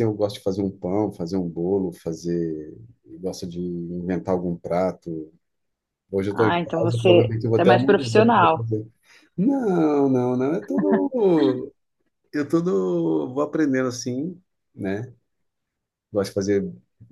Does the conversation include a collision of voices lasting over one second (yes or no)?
yes